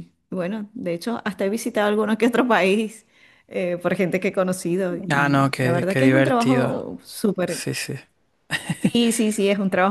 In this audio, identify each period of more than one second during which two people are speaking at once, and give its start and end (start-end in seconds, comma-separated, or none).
5.1-6.7